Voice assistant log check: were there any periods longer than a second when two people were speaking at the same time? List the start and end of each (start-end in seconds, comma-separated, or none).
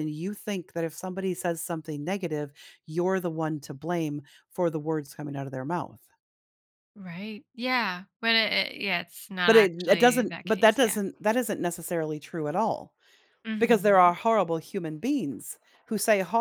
9.4-11.0